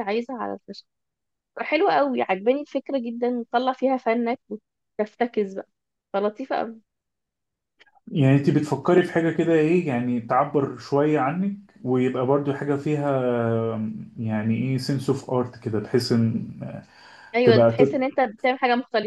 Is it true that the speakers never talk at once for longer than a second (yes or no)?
yes